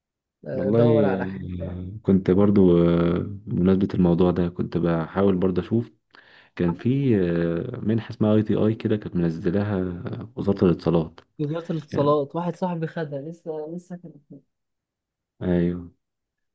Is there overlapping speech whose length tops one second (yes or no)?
yes